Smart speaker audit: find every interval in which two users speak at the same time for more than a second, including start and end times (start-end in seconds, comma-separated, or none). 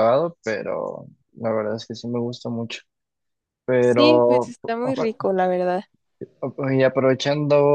3.8-5.3